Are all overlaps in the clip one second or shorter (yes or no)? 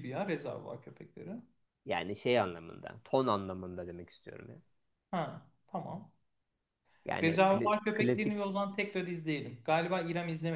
no